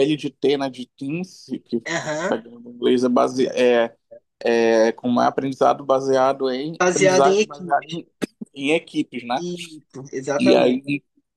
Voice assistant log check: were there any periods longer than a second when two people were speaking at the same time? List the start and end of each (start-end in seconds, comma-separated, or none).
6.8-8.0